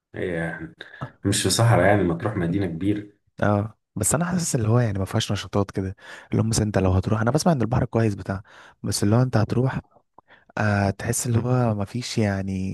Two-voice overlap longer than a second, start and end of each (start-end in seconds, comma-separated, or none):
none